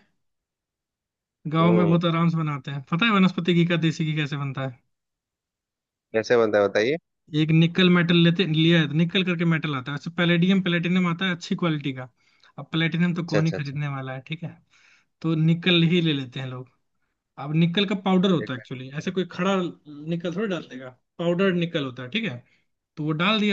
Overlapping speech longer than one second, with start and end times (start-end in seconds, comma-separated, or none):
none